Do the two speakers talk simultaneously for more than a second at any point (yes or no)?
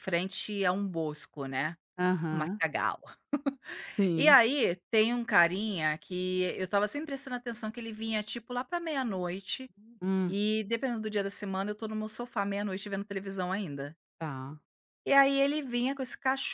no